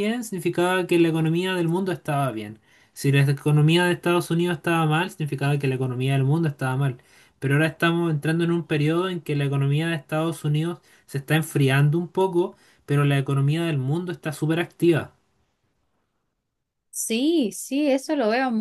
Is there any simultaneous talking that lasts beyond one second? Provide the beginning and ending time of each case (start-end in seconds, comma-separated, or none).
none